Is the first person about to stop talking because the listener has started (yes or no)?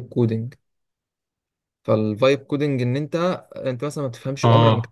no